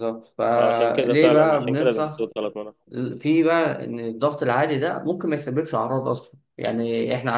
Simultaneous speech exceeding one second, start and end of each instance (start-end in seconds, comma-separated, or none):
0.6-2.3